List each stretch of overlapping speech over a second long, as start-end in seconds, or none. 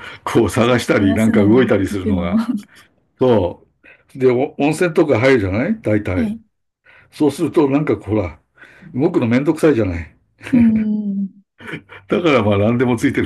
0.6-2.4